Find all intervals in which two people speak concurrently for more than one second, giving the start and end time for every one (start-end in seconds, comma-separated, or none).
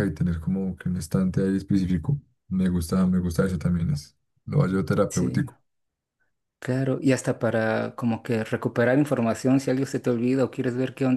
none